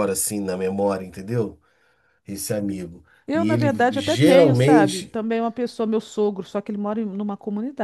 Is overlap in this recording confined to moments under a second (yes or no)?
no